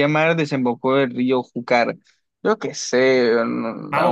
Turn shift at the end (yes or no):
yes